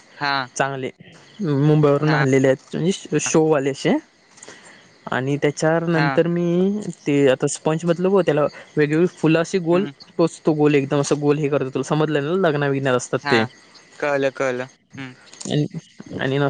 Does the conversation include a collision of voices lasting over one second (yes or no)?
no